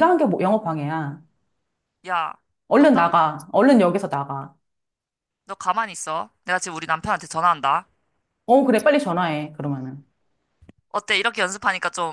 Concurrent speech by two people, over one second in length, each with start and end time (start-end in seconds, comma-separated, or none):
none